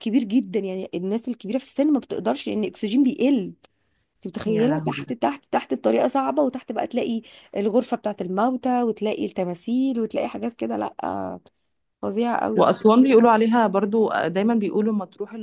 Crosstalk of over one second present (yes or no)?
no